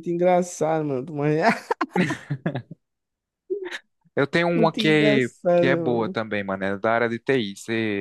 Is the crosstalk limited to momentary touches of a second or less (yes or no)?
no